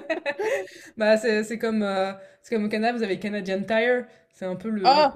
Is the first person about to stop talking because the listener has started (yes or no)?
no